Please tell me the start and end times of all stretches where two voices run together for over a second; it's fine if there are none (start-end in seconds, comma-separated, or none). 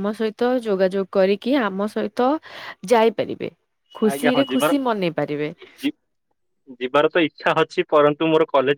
4.1-5.5